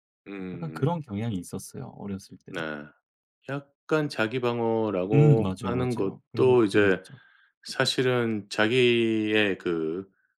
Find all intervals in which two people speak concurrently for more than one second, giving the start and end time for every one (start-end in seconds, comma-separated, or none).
5.1-7.0